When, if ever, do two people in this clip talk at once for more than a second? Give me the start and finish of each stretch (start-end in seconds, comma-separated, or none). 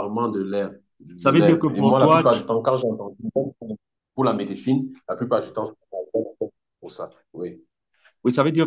1.2-2.4